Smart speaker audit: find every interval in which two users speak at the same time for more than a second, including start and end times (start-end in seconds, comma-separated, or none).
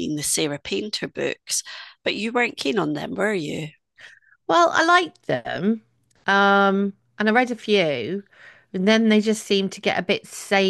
none